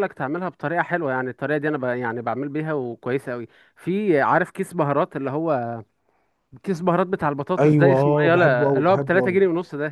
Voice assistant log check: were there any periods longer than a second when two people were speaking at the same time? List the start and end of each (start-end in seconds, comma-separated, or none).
7.6-9.4